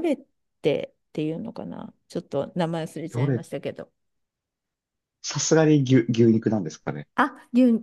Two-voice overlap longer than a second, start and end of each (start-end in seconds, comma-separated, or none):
none